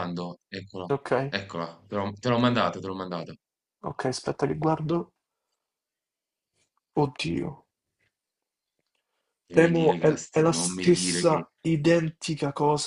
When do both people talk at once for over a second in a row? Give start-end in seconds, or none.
9.5-11.5